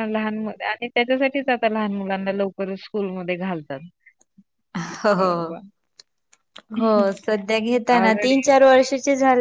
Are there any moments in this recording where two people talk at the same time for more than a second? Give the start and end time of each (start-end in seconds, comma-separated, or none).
none